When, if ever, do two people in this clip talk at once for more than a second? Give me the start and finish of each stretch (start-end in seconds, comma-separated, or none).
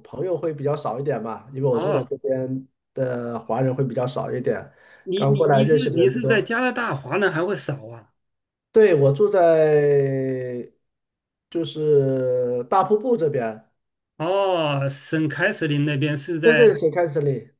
5.1-6.5